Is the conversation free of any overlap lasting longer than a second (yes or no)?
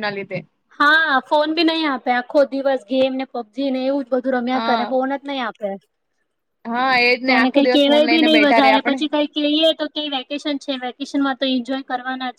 no